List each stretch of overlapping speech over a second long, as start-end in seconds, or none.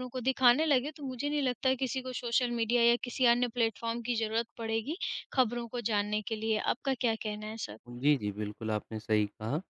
none